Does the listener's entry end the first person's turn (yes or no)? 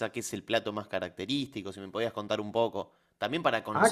yes